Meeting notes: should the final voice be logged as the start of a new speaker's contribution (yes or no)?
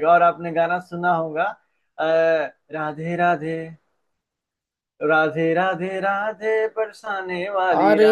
yes